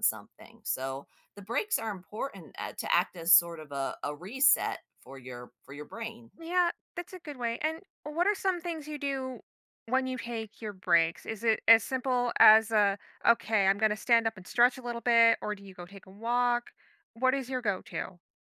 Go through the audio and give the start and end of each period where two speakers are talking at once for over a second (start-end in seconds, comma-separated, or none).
none